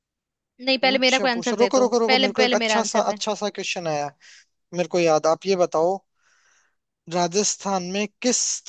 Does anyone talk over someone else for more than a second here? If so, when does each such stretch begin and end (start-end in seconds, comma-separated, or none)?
0.8-3.2